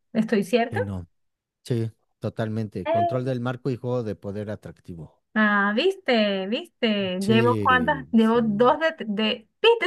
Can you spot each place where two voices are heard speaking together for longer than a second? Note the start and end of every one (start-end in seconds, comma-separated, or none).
7.2-8.8